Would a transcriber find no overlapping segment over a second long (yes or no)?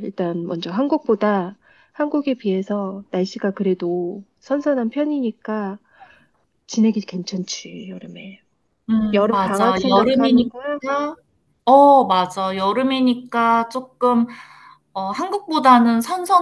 no